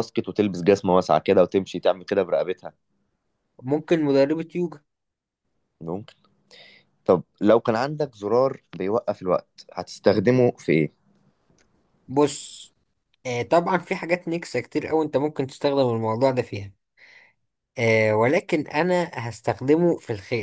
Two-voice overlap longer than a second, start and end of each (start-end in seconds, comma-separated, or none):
none